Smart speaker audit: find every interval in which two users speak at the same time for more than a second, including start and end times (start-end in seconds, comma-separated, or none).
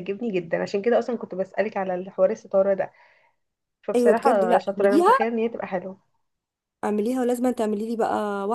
4.0-5.3